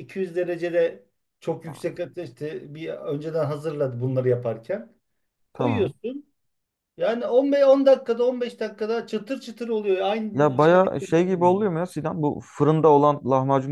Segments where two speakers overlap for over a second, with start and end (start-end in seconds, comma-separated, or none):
10.3-11.6